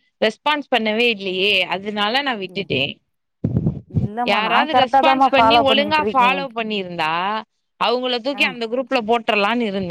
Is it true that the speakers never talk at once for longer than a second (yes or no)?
no